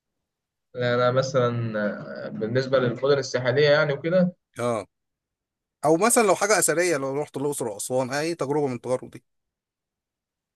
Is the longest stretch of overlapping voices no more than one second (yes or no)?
yes